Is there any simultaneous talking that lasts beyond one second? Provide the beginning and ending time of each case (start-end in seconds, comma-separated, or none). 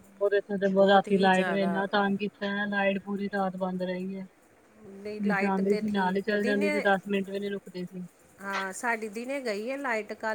4.8-6.9